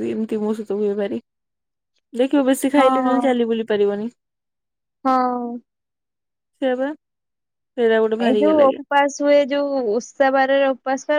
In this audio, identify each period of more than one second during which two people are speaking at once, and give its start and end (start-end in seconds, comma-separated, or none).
none